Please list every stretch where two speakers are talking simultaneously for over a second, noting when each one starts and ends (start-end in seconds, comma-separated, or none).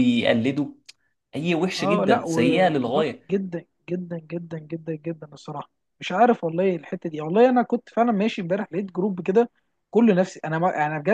1.8-3.2